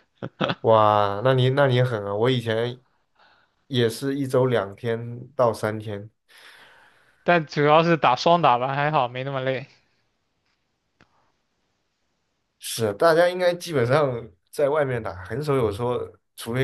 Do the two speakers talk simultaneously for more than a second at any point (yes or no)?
no